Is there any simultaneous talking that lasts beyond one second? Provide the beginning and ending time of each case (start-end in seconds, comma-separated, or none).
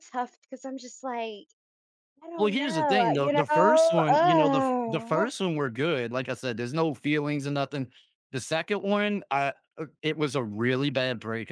2.4-3.9